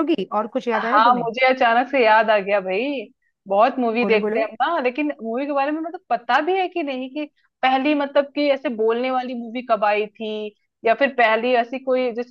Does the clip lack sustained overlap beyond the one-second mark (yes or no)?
yes